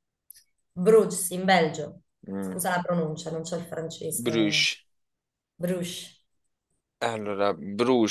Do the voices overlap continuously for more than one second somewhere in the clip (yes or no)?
no